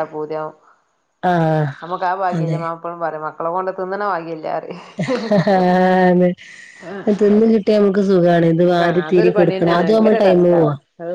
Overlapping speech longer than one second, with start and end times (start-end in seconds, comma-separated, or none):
8.7-10.6